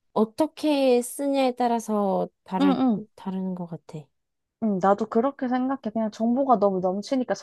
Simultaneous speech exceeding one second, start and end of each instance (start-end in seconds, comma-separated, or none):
none